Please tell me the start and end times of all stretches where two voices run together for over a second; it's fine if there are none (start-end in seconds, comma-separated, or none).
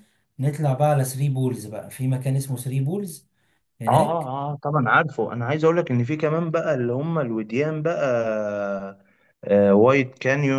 none